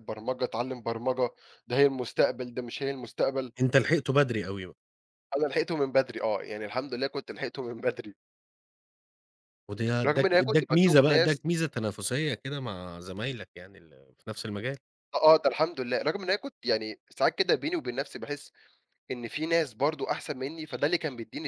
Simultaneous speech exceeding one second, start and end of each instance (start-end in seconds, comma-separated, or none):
10.1-11.4